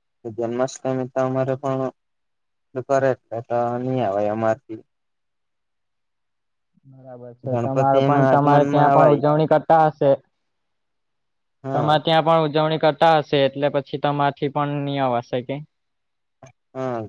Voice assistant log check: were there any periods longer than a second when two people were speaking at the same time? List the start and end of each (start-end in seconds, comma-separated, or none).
7.5-9.2